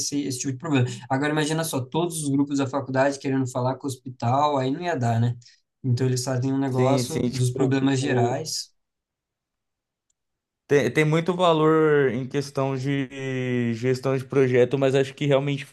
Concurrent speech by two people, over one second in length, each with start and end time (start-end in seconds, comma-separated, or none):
6.7-8.4